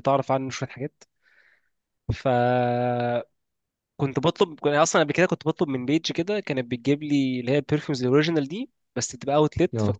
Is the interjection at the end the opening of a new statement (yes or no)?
no